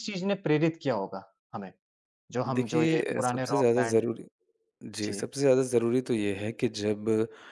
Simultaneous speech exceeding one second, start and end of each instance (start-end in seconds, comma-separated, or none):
2.5-4.0